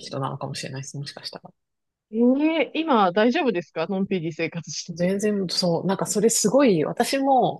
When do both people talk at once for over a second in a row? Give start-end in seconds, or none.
none